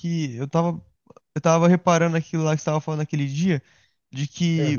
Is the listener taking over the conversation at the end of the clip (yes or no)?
no